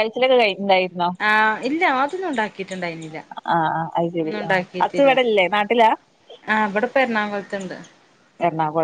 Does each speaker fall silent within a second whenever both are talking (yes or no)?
yes